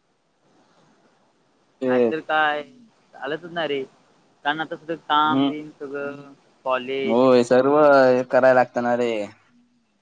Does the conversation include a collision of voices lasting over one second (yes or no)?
no